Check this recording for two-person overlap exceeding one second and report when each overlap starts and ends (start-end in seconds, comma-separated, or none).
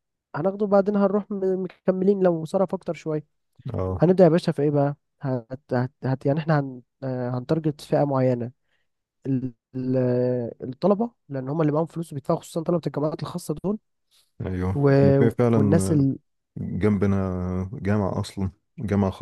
none